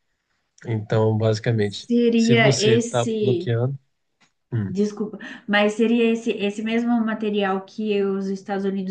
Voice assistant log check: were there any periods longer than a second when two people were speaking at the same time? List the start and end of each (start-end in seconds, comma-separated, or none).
1.9-3.6